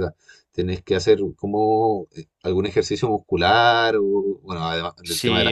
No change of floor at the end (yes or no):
no